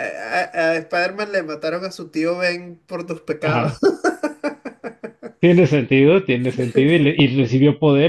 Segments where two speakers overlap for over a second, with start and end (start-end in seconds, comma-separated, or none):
none